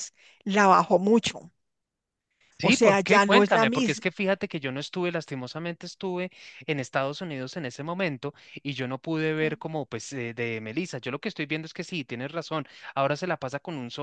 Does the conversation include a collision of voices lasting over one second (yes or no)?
yes